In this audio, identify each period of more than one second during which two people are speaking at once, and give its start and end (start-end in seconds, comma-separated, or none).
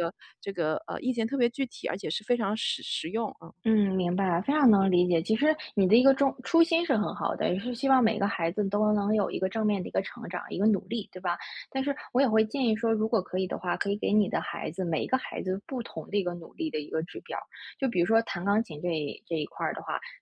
none